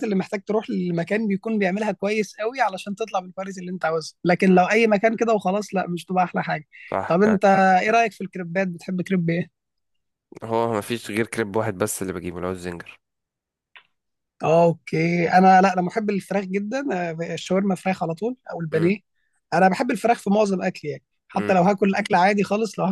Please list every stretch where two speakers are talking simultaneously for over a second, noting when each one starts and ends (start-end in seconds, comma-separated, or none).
none